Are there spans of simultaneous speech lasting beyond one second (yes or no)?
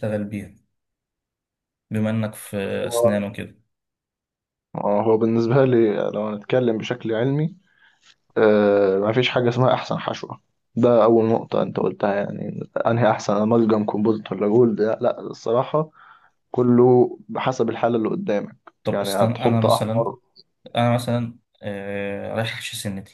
yes